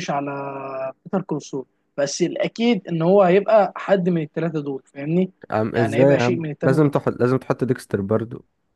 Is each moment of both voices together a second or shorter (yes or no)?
no